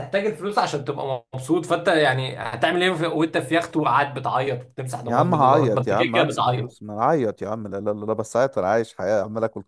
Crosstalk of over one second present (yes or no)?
yes